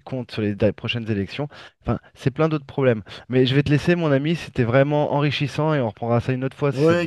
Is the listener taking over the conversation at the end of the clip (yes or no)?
yes